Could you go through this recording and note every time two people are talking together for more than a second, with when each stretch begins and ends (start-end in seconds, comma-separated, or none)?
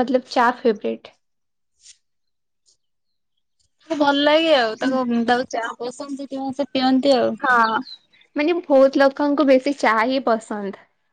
none